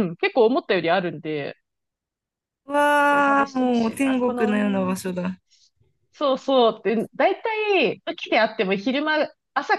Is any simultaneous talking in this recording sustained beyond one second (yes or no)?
yes